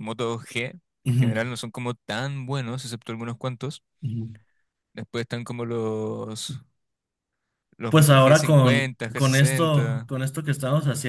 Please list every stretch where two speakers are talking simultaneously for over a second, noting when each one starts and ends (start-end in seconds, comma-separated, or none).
7.9-10.1